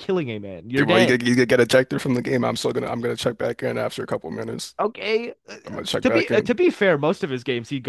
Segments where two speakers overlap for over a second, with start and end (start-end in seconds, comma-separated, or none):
none